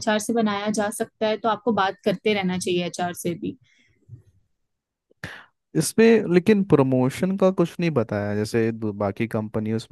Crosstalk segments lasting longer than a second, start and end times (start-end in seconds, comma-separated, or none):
none